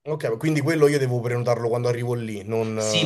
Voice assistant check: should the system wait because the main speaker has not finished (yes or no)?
no